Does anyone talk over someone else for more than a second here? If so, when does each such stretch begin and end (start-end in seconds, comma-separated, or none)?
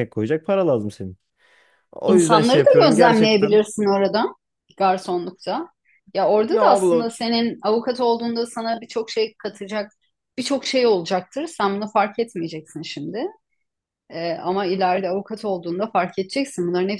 2.1-3.6